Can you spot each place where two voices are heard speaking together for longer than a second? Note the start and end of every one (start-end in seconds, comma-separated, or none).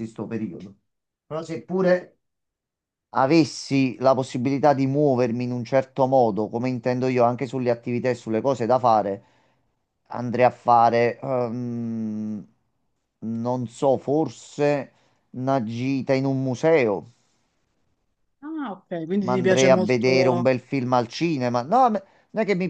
19.2-20.5